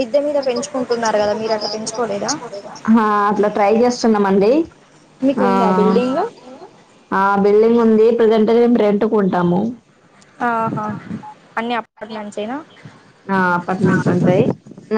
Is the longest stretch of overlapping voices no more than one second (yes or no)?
yes